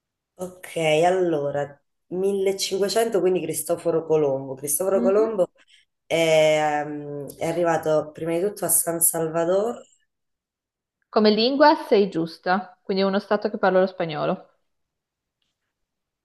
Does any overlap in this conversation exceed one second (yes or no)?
no